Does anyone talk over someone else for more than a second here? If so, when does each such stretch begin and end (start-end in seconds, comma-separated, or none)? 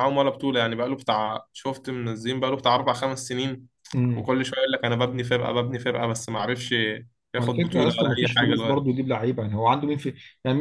7.3-9.0